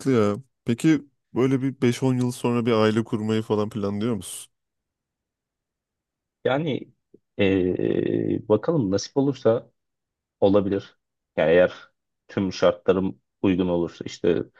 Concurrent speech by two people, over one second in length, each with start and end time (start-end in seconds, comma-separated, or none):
none